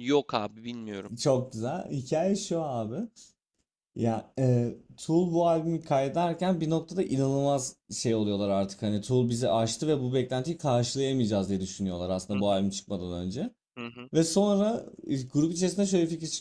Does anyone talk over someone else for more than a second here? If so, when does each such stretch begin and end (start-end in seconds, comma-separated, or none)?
none